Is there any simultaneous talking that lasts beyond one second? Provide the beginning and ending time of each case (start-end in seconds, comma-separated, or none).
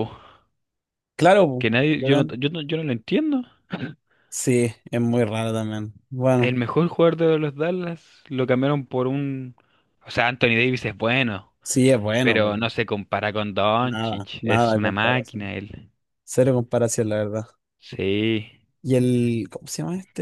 13.8-15.5